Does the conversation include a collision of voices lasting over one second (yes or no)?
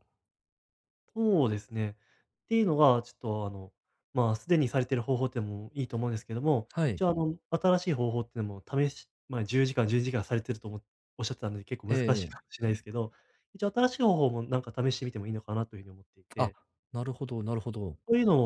no